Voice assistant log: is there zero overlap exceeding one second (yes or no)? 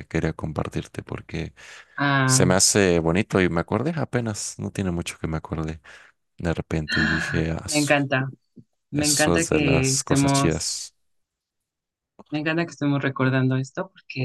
no